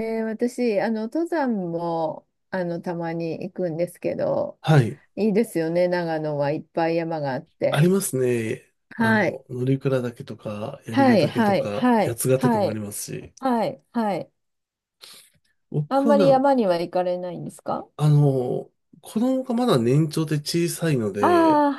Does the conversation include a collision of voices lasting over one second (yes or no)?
yes